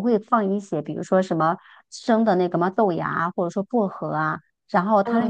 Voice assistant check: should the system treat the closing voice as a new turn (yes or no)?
no